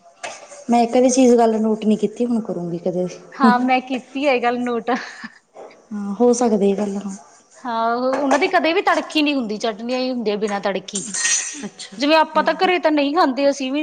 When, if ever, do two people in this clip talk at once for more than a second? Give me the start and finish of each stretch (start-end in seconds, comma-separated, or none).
none